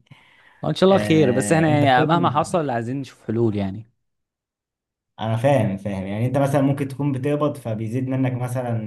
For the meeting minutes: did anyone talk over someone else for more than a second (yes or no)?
yes